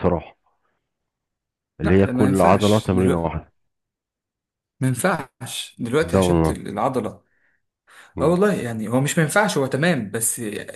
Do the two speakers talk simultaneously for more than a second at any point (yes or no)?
yes